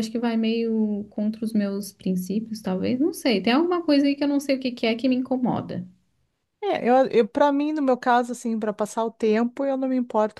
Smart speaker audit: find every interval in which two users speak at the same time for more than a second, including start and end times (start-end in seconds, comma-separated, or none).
none